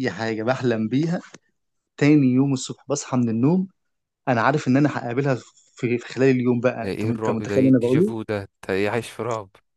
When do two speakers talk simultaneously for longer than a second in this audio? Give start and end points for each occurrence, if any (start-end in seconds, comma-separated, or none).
6.8-8.2